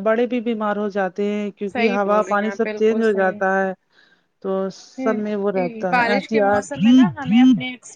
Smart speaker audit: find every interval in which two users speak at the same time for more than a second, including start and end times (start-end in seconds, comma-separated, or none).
1.7-3.4